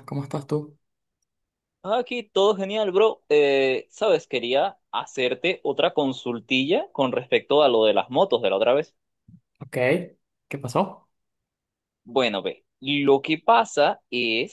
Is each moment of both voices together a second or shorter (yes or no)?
yes